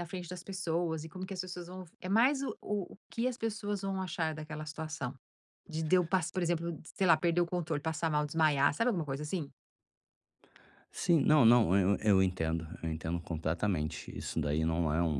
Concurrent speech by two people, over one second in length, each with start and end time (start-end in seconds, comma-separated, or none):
none